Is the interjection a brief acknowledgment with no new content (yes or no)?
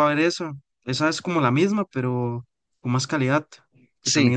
no